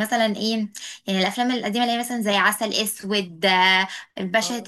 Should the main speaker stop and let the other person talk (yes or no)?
no